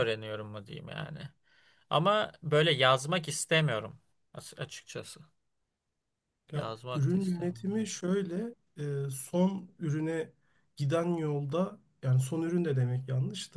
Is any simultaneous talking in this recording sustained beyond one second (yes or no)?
yes